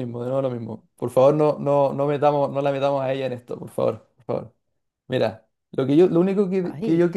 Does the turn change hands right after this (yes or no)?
no